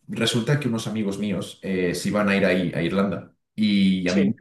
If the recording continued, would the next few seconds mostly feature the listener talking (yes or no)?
no